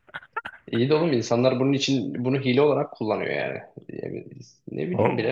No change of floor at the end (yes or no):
no